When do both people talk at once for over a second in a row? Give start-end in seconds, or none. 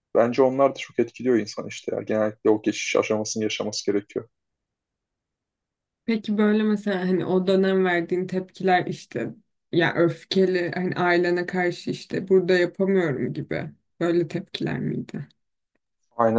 none